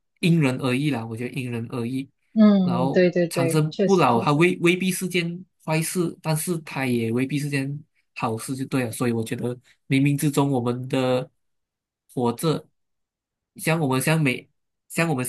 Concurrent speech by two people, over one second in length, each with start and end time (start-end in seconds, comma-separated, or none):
2.6-4.5